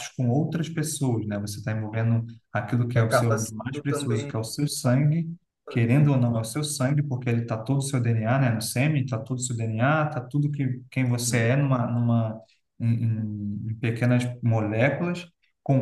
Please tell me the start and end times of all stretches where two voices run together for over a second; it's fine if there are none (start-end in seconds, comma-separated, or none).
3.0-4.3